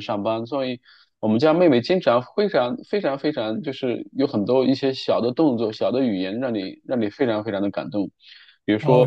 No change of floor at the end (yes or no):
no